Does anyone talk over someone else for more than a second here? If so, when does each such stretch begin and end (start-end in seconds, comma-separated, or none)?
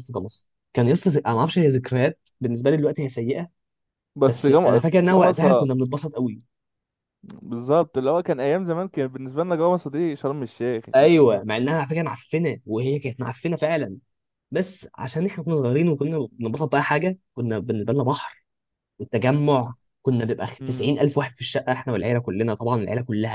4.2-5.7